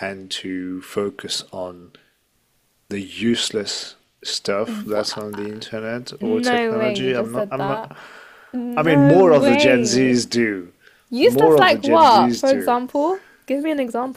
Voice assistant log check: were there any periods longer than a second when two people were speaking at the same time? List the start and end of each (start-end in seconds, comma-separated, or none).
6.2-7.9, 8.8-10.2, 11.2-12.8